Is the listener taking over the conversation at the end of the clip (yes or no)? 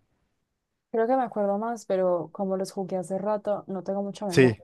no